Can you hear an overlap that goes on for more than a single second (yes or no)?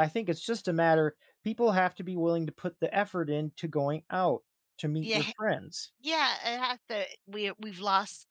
no